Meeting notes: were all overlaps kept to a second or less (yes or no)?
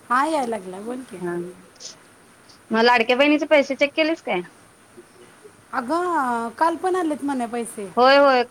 yes